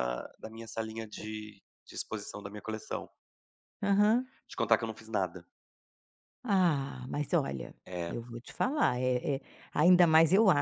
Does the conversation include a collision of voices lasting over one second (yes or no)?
no